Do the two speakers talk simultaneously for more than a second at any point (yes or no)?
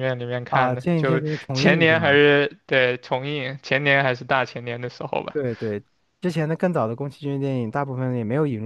yes